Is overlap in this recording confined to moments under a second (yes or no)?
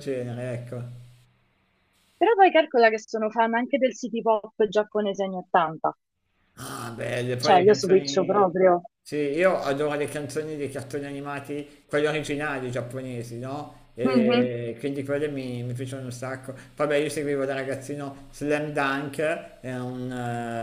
no